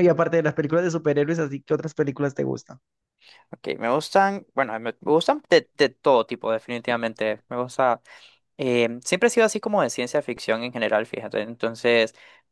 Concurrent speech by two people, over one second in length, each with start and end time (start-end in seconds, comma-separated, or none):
none